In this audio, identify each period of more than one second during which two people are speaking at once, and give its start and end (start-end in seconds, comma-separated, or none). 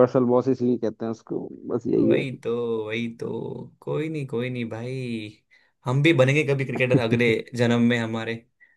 none